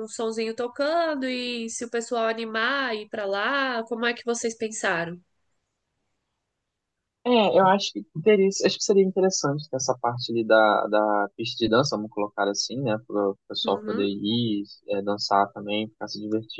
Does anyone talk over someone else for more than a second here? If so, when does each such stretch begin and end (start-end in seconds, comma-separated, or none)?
none